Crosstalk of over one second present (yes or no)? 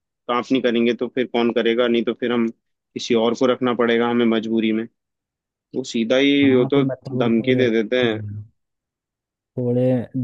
yes